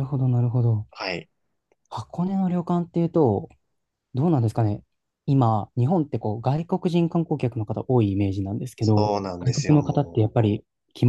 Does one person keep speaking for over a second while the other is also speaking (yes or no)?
yes